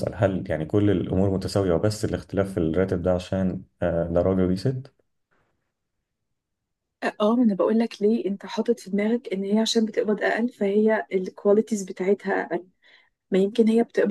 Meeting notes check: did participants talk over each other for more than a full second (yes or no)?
no